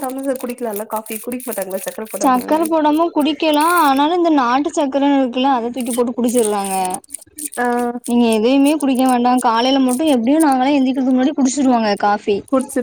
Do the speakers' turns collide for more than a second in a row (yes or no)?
no